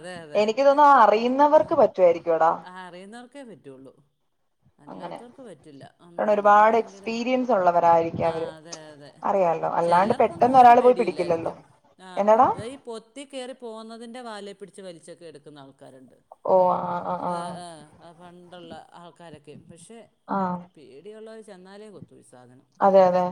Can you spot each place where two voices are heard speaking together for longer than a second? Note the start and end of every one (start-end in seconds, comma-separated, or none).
9.8-11.5